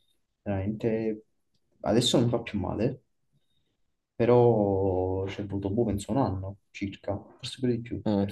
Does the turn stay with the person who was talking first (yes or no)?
yes